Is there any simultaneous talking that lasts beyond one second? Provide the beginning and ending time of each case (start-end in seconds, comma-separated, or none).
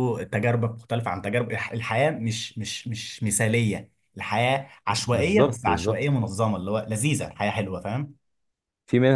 4.9-6.2